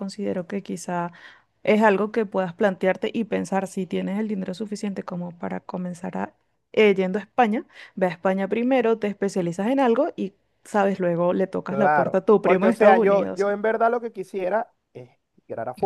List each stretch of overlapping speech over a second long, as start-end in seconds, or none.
11.7-13.5